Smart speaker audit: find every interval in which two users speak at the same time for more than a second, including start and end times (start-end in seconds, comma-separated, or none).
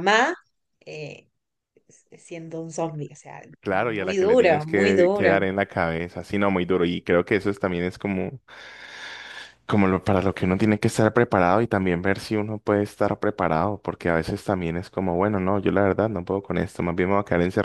3.6-5.4